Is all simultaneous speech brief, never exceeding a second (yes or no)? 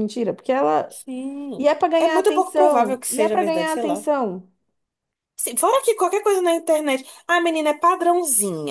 no